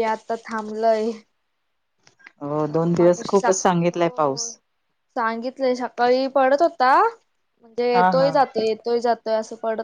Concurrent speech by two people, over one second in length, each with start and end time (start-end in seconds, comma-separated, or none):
2.7-4.5